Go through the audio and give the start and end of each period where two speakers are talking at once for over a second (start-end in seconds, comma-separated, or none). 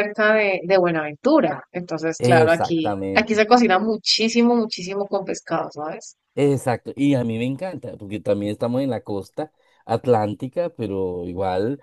2.2-3.4